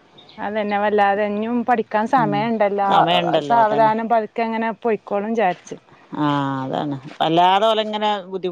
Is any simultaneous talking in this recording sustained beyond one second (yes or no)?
no